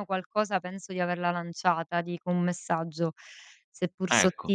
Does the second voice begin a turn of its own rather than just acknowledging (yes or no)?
no